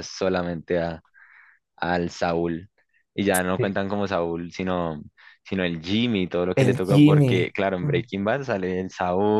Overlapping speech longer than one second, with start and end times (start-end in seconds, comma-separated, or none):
6.6-8.0